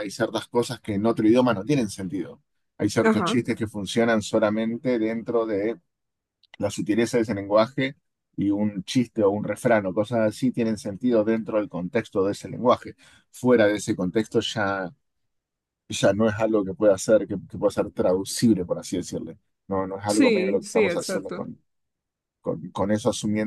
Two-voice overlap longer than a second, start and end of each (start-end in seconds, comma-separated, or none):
20.1-21.5